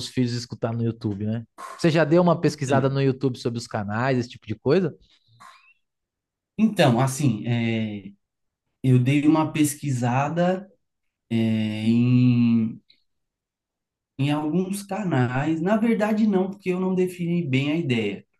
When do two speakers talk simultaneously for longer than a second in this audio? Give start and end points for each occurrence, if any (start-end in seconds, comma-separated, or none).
none